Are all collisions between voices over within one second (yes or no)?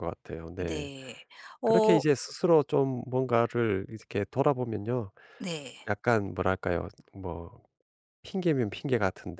yes